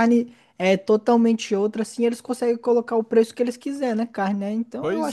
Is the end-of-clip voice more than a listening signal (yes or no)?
yes